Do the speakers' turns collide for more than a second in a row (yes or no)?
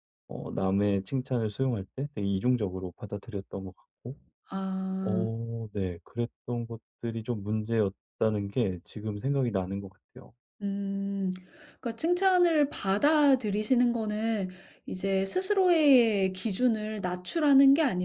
no